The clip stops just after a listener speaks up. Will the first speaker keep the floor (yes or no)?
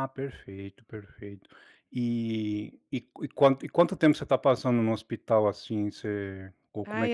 no